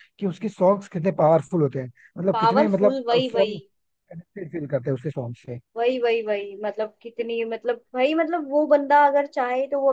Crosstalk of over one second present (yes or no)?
yes